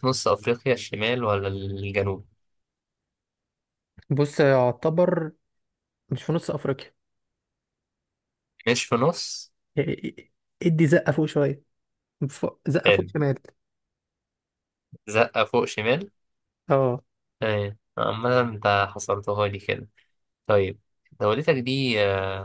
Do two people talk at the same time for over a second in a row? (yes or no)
no